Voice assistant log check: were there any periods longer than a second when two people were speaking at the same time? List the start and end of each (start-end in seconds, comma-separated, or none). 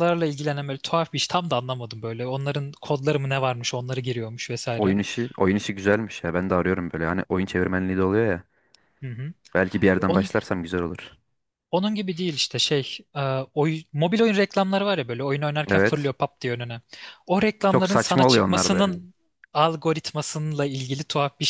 17.7-19.0